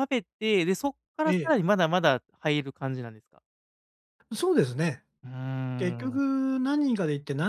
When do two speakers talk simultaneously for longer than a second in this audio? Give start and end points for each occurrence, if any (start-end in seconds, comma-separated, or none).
none